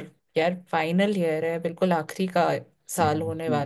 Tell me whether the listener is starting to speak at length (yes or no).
yes